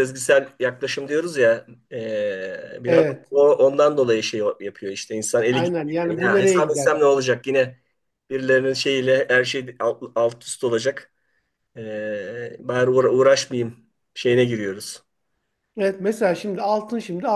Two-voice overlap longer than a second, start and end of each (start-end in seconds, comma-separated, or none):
5.5-6.9